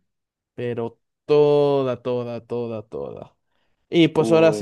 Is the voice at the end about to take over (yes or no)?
no